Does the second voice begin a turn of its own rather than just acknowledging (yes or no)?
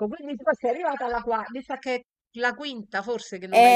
yes